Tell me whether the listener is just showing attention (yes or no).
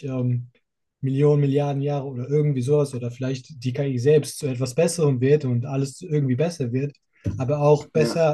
yes